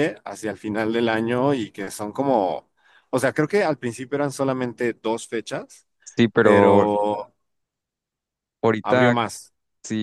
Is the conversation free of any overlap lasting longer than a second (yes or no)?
yes